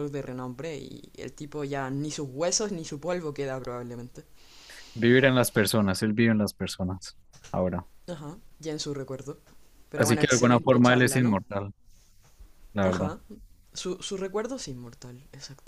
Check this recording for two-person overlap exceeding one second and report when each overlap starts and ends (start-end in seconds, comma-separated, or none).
9.9-11.4